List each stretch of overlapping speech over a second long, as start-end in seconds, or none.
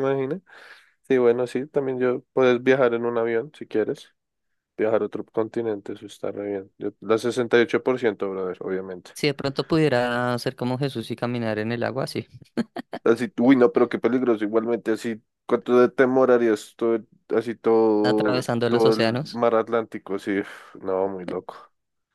18.0-19.4